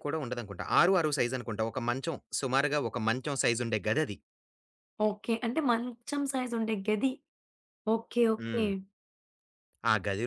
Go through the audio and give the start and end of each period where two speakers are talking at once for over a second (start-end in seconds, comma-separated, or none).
none